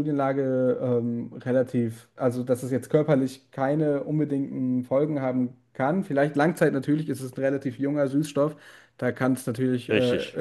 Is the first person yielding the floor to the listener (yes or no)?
no